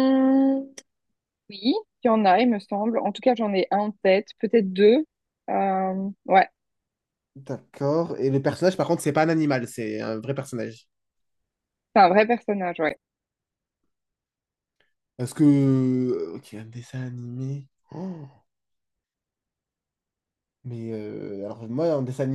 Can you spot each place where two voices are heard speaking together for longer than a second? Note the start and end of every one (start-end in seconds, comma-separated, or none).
none